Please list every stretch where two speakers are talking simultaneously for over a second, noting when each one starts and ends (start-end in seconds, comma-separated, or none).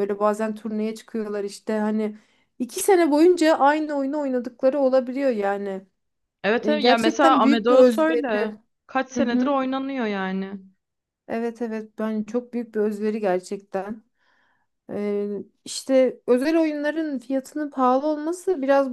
6.6-8.2